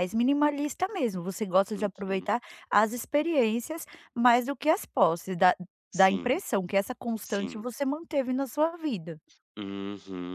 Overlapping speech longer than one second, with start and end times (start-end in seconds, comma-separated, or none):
none